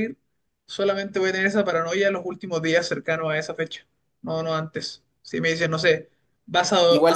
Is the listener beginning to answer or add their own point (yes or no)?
yes